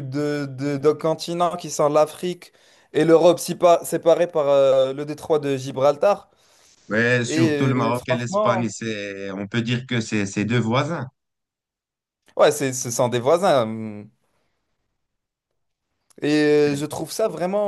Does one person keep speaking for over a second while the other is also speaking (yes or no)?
yes